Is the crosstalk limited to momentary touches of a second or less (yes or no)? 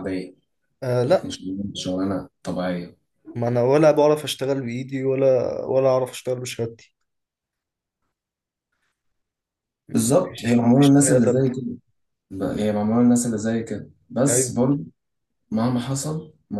no